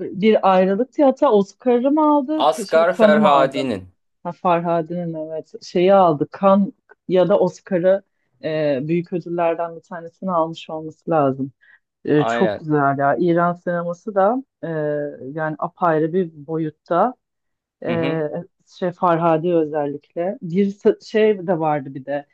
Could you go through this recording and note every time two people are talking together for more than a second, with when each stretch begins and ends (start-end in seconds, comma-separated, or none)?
2.4-3.7